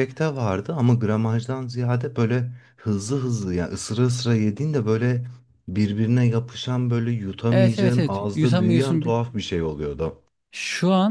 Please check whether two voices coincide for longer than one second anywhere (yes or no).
yes